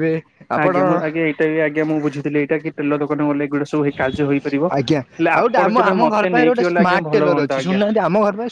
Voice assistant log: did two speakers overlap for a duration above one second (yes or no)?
yes